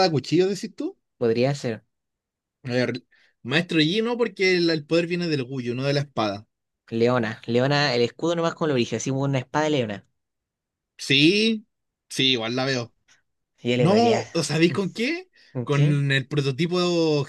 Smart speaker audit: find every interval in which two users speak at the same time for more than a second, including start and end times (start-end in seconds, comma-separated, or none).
none